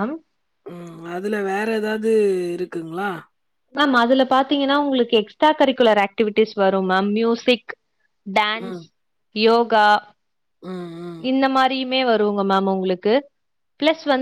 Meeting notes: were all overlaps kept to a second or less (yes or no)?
yes